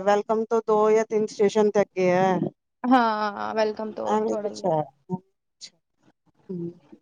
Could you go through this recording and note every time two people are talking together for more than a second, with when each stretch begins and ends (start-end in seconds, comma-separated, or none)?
none